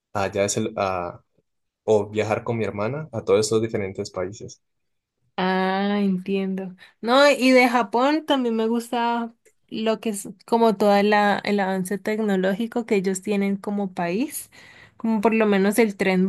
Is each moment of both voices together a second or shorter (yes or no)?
yes